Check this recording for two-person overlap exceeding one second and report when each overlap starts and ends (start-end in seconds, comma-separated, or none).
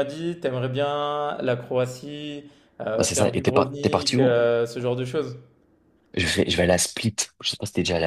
3.0-4.3